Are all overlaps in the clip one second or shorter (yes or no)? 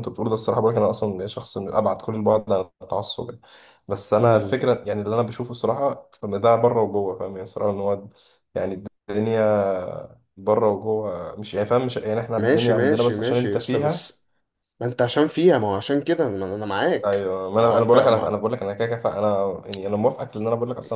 no